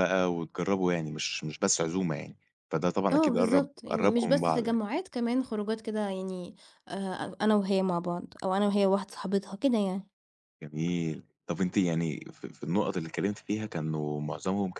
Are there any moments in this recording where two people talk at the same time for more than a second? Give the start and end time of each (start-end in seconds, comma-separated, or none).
3.1-4.8